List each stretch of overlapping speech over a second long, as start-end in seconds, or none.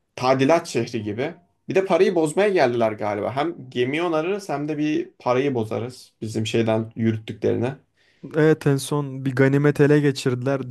none